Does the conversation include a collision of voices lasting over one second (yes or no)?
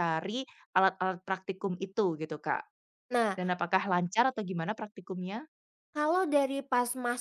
no